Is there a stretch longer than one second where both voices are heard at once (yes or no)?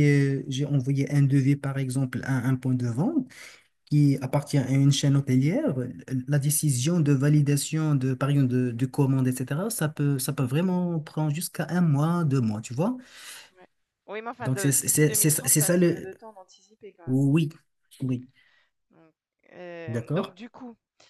yes